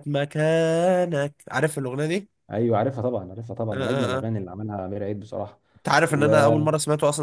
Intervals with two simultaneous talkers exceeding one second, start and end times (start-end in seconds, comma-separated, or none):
none